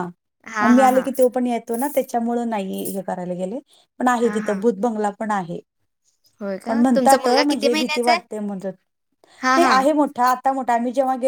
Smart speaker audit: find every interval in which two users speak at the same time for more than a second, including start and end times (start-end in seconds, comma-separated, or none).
6.7-8.2